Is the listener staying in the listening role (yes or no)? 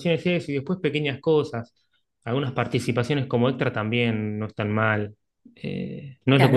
no